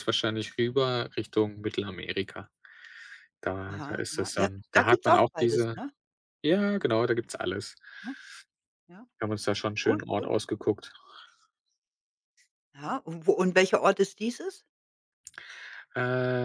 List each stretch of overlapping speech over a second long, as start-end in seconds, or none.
3.7-5.8